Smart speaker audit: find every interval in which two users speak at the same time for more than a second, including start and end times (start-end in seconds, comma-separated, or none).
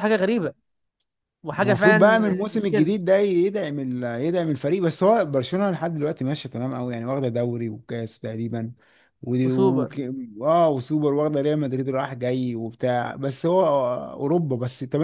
1.5-3.0